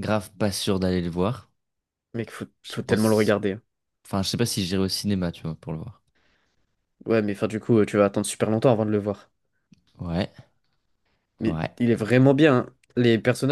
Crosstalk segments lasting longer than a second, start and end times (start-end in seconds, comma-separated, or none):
none